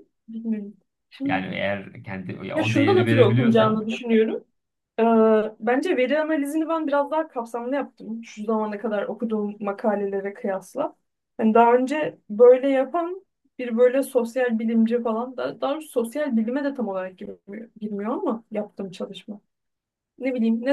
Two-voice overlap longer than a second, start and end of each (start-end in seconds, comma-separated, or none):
2.5-3.8